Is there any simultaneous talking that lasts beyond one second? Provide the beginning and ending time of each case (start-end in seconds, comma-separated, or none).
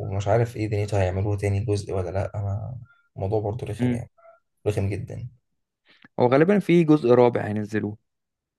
none